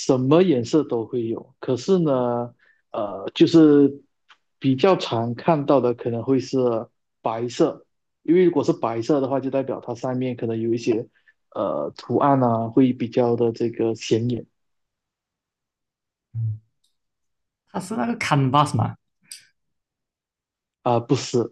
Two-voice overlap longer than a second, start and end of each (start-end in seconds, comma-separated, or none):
none